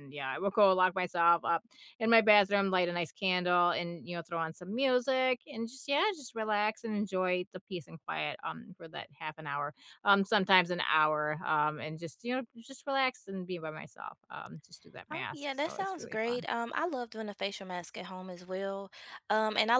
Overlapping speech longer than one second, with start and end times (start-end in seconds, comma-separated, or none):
15.1-16.5